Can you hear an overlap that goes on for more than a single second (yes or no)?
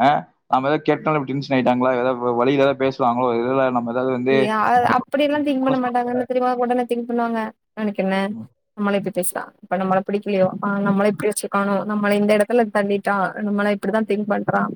no